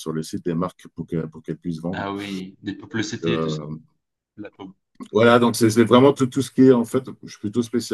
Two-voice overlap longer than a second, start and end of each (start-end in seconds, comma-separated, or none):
none